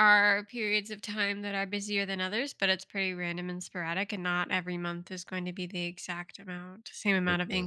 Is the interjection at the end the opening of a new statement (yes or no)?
no